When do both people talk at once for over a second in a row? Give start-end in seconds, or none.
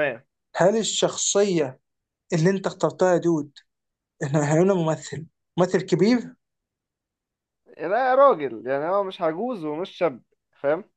none